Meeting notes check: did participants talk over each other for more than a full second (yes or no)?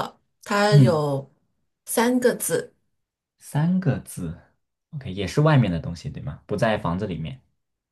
no